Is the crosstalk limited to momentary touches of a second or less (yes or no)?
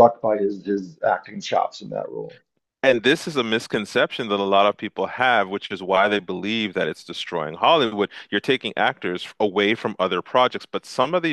yes